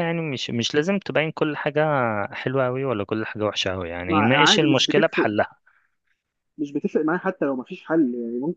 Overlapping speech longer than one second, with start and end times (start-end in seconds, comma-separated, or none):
4.1-5.3